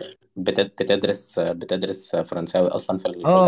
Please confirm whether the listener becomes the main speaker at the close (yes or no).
yes